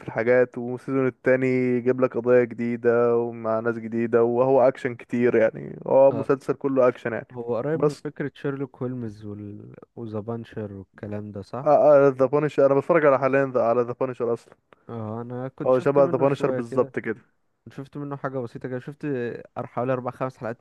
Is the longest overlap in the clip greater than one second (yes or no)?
yes